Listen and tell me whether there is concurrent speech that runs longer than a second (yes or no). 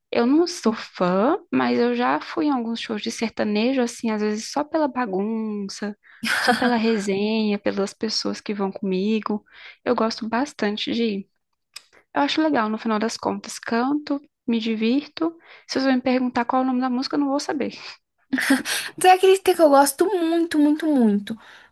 no